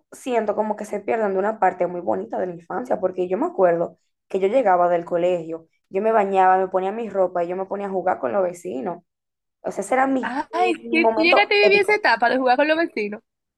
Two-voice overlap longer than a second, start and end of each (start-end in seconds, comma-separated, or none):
10.2-12.0